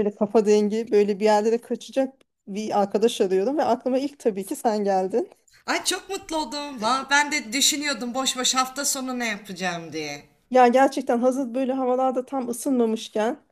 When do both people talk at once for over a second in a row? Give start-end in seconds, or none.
none